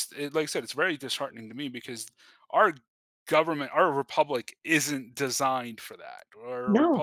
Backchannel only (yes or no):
yes